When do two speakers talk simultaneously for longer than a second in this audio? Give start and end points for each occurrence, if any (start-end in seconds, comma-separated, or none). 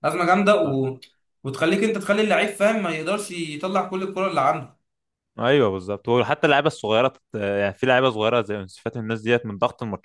none